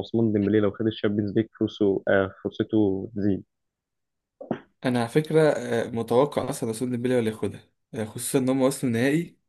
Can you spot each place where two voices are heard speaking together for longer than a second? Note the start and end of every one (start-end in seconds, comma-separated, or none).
none